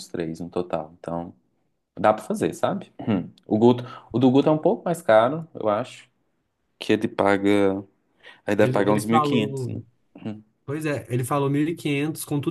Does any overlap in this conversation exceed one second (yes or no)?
yes